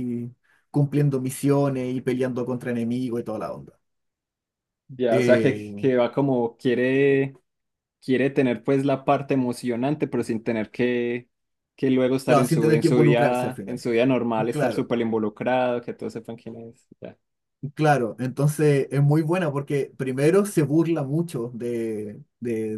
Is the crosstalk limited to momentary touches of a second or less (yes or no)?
no